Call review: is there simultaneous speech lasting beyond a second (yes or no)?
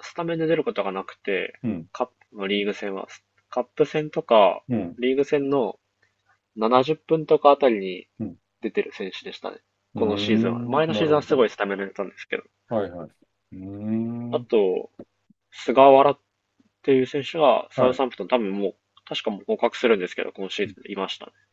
yes